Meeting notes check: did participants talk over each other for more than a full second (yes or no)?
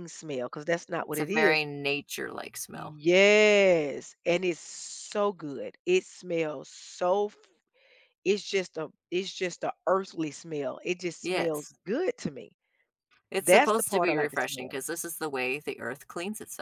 yes